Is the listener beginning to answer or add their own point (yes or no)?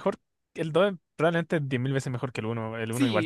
yes